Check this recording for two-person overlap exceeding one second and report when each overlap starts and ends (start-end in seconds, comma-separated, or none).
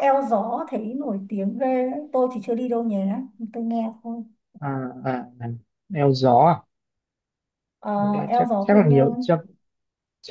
8.0-9.4